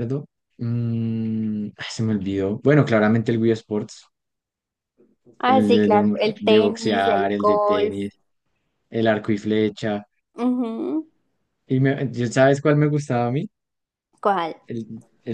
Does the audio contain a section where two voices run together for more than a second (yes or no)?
yes